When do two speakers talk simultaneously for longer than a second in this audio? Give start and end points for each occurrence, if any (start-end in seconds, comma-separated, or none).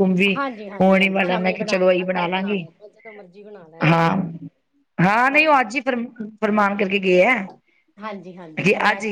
0.8-2.7